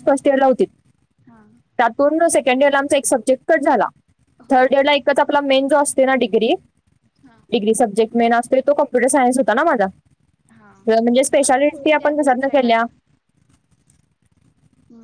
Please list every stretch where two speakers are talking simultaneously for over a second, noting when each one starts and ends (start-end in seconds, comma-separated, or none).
11.2-12.8